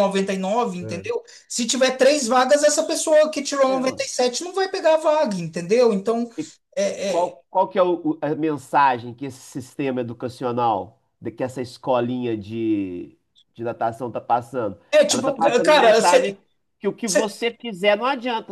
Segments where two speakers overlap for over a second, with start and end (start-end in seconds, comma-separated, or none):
14.9-16.4